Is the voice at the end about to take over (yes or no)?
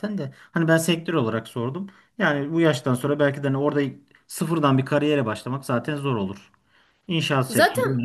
no